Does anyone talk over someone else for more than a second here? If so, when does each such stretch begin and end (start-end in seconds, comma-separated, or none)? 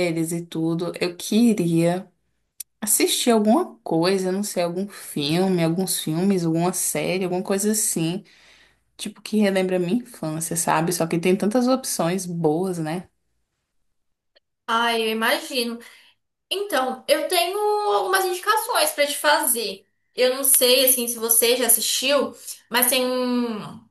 none